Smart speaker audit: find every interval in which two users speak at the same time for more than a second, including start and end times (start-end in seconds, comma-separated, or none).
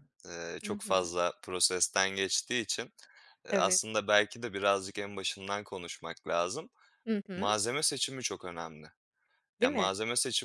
none